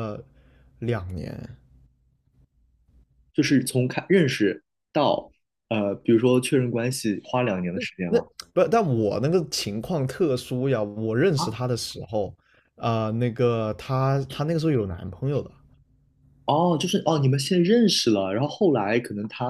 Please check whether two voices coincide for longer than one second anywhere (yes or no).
no